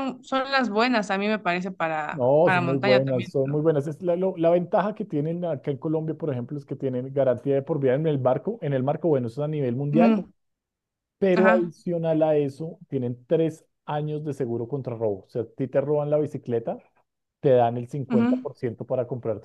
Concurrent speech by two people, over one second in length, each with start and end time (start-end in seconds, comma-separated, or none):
2.1-3.6